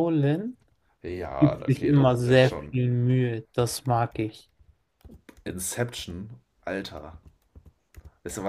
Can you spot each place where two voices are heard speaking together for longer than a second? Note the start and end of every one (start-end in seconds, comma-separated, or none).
1.4-2.8